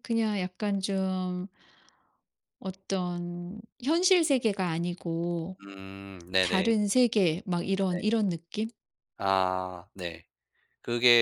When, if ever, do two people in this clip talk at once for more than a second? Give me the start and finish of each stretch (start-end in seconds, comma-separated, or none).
none